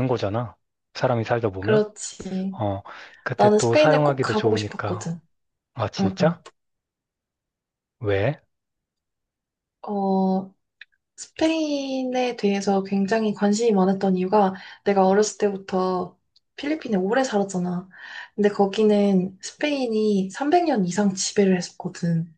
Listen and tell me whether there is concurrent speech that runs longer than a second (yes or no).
yes